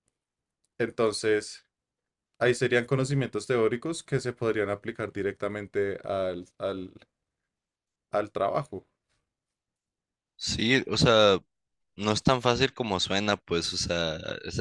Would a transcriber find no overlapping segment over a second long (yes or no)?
yes